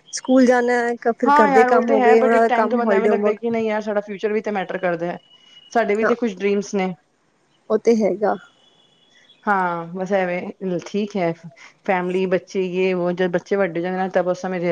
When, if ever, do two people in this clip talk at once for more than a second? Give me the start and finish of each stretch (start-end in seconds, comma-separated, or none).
1.3-3.4